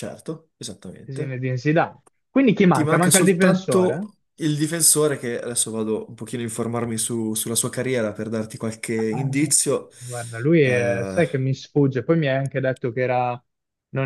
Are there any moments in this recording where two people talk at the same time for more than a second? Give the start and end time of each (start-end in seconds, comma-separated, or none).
2.7-4.1